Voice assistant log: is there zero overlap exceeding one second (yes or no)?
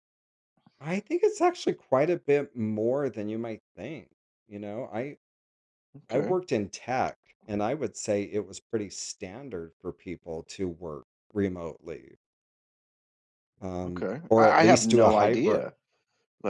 no